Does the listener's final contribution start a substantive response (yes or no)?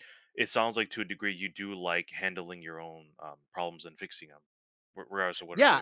yes